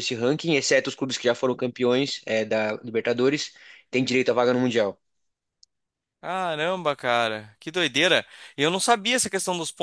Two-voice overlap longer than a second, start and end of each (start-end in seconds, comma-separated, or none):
none